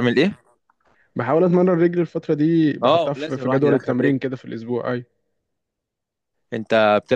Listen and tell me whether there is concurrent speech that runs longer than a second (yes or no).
yes